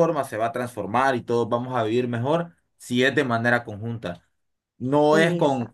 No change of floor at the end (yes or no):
yes